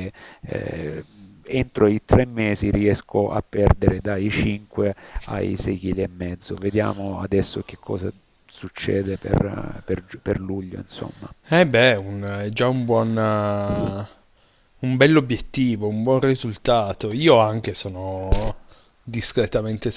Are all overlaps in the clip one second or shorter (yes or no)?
yes